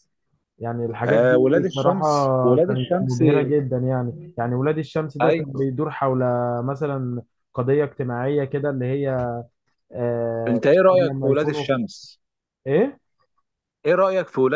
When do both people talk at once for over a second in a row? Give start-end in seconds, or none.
1.0-3.2, 10.5-11.7